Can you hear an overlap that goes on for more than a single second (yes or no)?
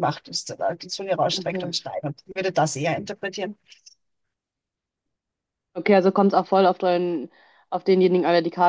no